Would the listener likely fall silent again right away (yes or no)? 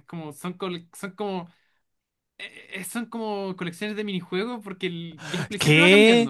yes